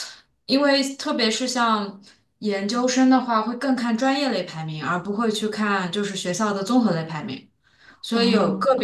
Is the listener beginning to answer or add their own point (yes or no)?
no